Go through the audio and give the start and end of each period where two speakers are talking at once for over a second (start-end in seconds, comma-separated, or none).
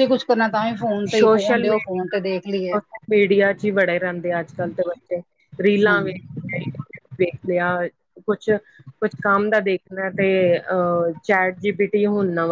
1.1-2.7